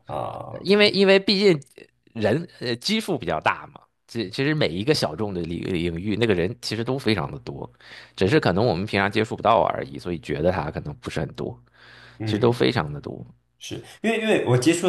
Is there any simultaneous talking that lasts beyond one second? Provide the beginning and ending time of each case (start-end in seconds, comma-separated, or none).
none